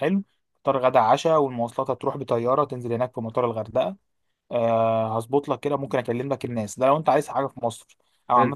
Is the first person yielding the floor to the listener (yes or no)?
no